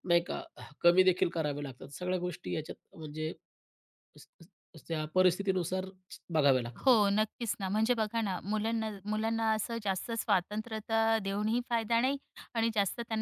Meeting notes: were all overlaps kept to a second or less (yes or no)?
yes